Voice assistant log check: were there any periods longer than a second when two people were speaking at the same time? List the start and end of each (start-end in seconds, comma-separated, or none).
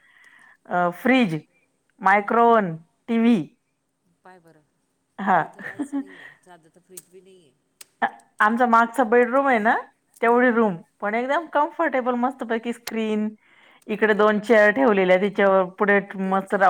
none